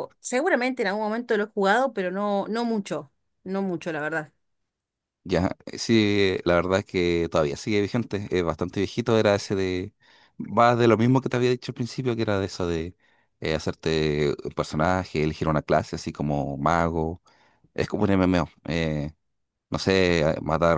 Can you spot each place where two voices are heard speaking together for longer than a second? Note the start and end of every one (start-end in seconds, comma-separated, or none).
none